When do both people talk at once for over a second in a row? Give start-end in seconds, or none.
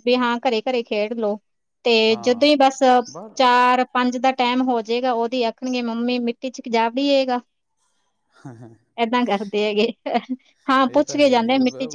none